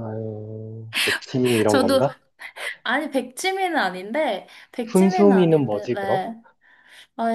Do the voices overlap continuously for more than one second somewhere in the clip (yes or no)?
yes